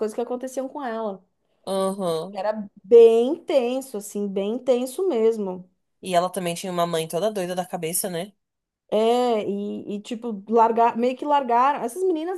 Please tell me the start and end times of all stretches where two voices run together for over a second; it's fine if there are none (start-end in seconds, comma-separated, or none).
none